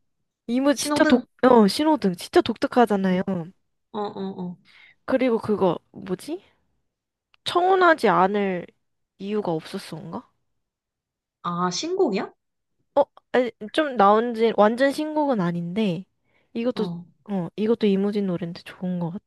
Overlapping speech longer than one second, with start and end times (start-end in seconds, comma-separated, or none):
none